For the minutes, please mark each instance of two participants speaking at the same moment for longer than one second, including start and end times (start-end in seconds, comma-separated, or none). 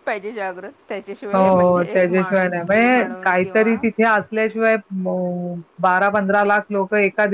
1.3-3.7